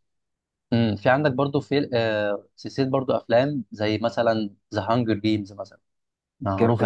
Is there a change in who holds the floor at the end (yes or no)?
no